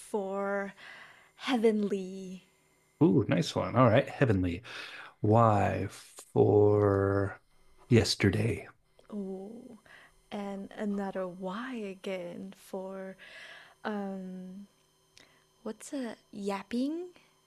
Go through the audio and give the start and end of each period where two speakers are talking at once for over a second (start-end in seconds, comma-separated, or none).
none